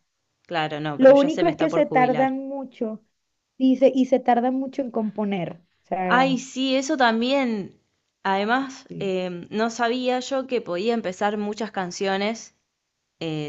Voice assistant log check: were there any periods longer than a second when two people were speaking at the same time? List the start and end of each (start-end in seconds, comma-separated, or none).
1.0-2.3